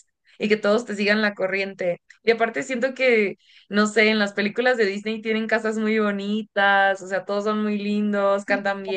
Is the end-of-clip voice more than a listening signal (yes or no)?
no